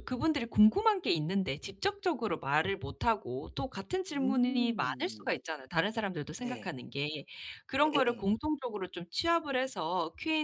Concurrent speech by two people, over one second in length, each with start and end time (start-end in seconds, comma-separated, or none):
4.1-5.3